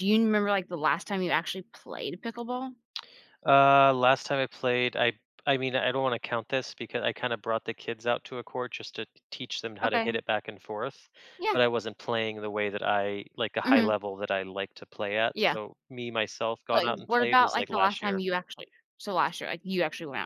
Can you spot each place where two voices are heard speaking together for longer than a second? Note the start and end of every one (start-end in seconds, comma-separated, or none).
16.7-18.2